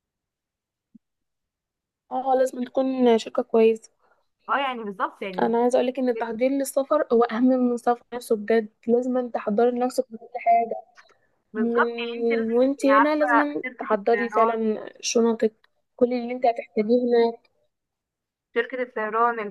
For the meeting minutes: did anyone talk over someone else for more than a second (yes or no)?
yes